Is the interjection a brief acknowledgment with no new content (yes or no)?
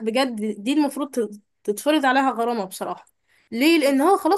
yes